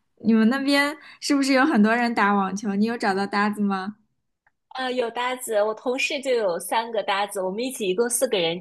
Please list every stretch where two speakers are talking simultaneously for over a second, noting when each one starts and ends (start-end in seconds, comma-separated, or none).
none